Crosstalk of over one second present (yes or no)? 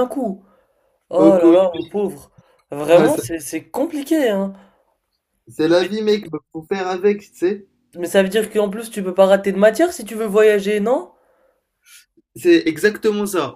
no